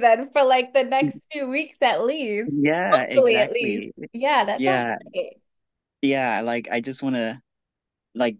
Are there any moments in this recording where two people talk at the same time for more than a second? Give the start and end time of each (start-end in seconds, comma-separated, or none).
2.5-3.9